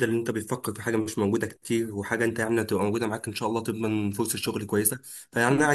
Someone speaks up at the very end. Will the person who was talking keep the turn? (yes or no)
yes